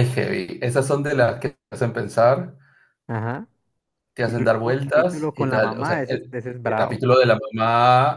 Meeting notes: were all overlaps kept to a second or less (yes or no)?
no